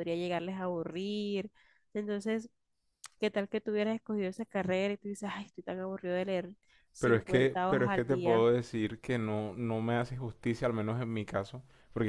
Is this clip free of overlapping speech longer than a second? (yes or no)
no